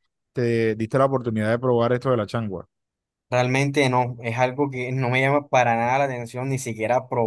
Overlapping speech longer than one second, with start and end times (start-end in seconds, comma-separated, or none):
none